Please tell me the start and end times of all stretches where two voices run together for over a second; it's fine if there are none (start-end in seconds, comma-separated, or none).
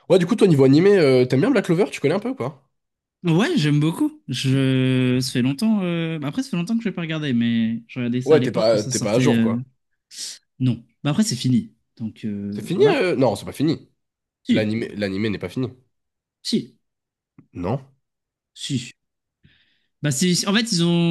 8.2-9.6